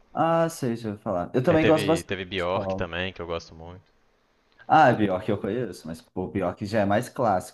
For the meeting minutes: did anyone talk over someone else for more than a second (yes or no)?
yes